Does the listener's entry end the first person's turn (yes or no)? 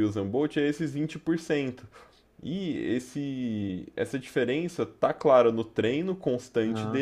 no